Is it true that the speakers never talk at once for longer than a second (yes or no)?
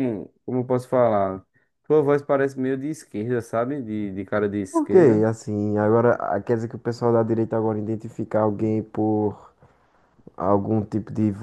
yes